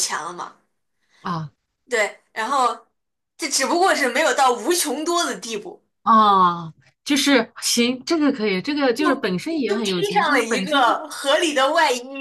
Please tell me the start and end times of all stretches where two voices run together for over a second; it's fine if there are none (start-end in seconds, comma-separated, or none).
9.0-10.9